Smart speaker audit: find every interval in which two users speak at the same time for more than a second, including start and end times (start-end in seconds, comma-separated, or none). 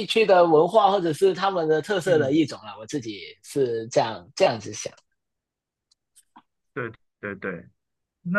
none